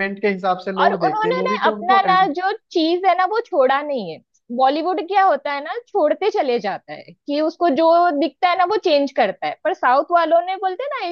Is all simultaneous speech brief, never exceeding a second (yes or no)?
no